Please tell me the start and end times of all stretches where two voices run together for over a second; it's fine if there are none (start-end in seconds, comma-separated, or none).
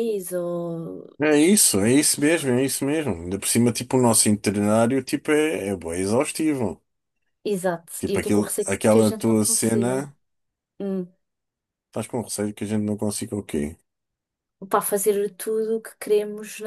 8.0-10.1